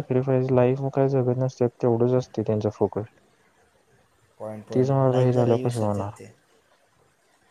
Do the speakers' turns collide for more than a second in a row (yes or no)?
yes